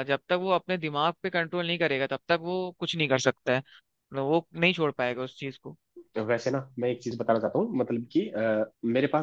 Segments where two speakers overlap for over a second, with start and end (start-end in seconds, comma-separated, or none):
none